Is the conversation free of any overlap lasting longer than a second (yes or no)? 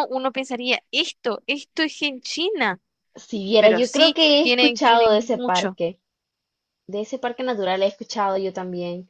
no